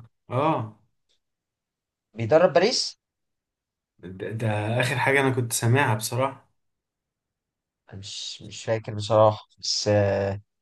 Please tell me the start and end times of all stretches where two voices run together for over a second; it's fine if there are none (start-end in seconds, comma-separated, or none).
none